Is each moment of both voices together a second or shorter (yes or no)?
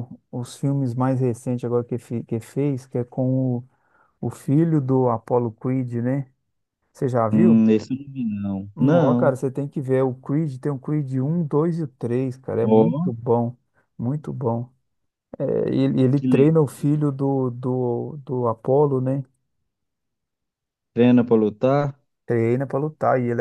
yes